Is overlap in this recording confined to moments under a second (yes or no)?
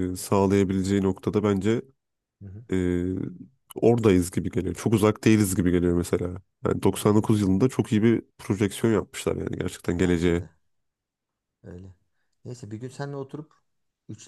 yes